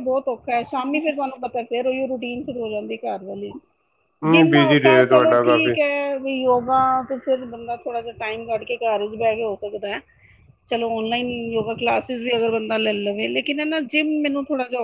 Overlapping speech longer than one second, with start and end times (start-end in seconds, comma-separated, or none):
4.3-5.7